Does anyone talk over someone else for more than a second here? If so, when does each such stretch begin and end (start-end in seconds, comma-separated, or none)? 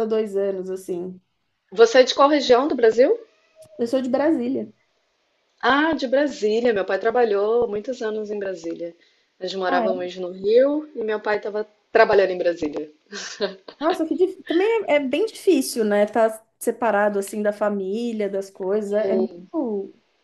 none